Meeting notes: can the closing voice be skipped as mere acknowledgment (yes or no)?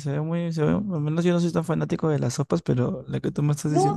no